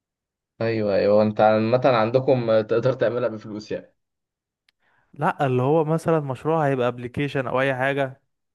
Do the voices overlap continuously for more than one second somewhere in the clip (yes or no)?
no